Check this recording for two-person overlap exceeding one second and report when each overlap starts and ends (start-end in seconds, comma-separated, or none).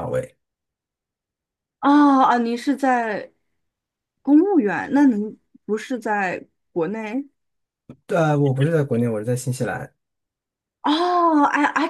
none